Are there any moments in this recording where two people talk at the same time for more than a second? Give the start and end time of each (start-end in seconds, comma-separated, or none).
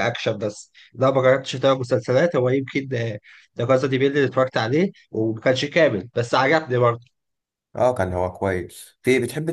none